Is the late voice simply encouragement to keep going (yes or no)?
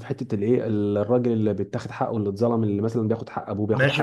no